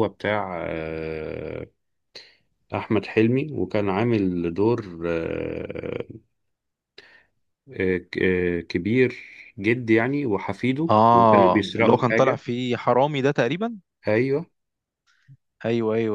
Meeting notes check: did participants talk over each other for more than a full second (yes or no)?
yes